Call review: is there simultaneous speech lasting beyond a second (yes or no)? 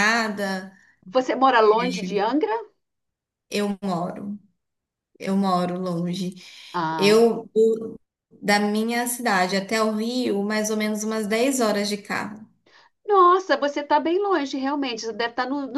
no